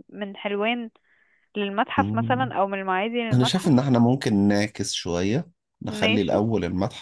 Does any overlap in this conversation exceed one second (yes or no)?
no